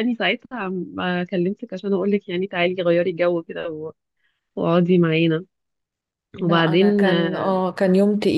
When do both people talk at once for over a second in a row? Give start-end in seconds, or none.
6.4-7.6